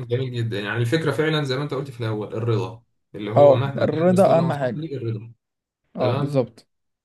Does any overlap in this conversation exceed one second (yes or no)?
yes